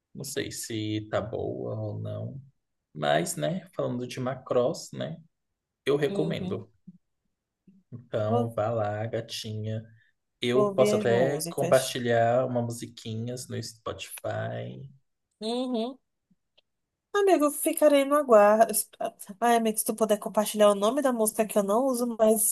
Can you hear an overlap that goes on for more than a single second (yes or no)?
yes